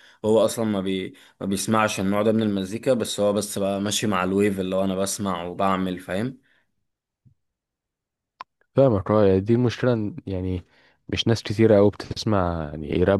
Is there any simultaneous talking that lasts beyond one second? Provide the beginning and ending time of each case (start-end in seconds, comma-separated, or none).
none